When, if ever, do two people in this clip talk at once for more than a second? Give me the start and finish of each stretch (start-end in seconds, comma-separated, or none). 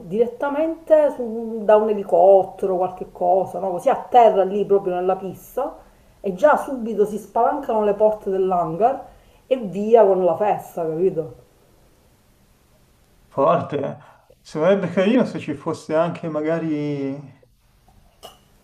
none